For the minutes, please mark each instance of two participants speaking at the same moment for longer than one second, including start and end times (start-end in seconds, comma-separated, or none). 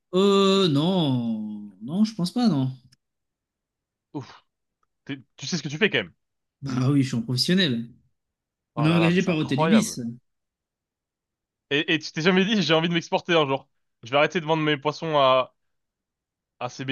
8.8-10.0